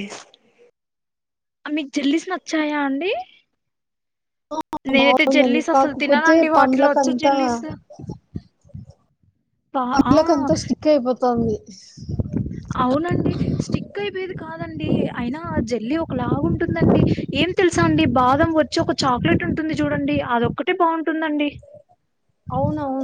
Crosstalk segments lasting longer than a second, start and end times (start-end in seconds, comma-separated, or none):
5.0-7.3